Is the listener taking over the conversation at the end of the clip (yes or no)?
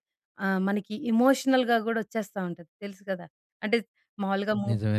no